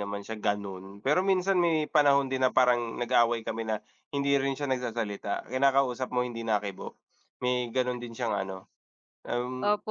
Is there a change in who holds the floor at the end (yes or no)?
yes